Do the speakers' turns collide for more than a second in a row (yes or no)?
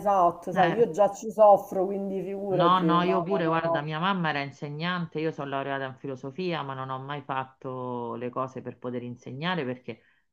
yes